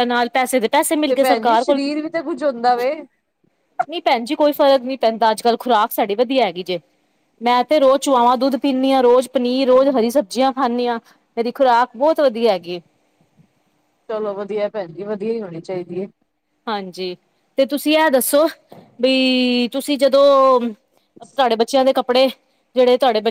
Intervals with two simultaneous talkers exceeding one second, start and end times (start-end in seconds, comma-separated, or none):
none